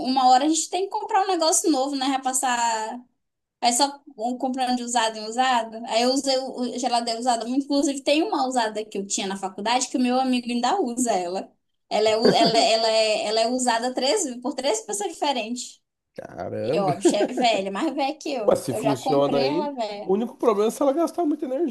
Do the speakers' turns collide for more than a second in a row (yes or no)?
yes